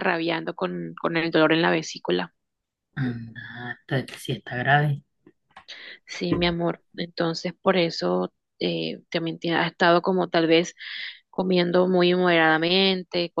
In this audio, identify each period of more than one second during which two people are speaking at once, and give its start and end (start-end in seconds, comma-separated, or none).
none